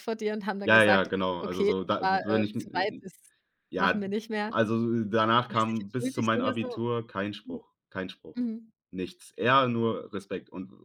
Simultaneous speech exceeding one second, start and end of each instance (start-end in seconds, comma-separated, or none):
0.6-3.0, 5.4-6.8